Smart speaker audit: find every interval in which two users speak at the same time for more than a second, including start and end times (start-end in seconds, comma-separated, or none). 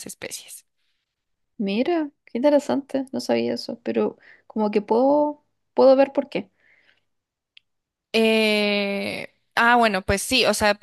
none